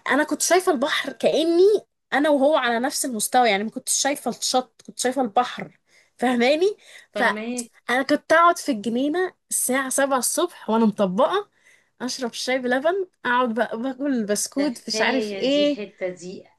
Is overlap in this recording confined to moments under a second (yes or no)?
no